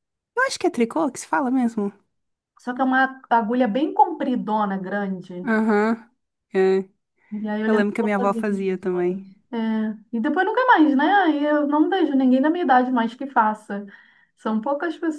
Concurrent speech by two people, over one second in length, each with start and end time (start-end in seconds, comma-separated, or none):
7.7-9.2